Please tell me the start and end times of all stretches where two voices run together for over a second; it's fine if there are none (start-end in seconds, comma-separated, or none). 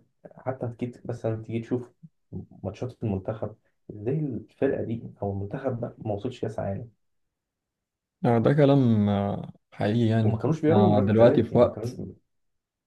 10.2-12.0